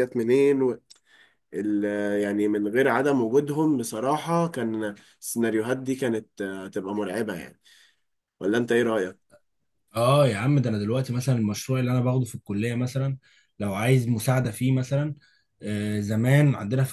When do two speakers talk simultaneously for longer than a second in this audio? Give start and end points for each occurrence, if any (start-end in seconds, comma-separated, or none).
none